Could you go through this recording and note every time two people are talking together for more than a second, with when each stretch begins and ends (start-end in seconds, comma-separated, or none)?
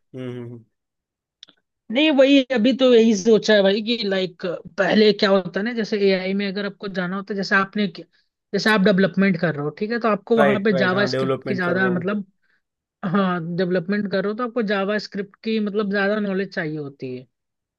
10.4-12.1